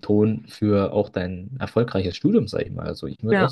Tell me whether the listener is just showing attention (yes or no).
yes